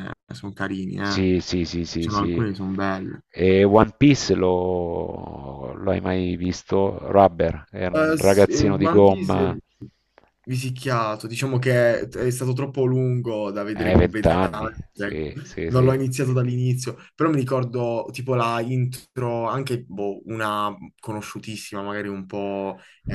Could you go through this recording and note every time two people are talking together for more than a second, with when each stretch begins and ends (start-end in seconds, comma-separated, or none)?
7.9-9.6, 13.7-16.0